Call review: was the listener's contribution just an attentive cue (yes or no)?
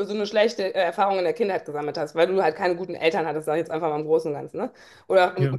yes